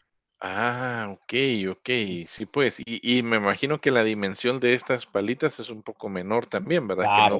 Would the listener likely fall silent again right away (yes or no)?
no